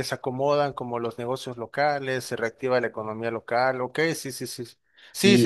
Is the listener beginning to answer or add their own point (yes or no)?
yes